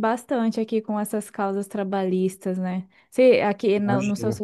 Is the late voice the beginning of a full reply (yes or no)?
no